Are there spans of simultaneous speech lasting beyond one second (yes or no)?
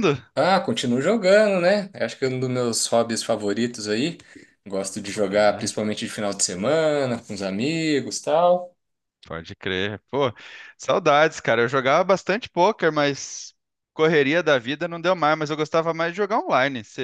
no